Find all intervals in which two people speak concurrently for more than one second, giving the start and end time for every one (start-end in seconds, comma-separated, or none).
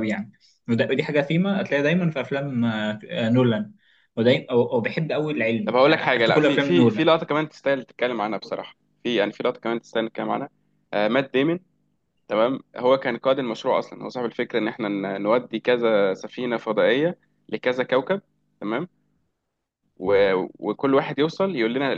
5.7-7.1